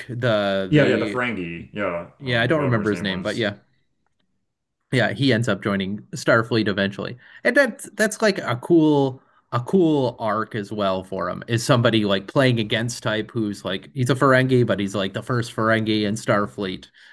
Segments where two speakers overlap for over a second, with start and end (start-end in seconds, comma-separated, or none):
2.2-3.4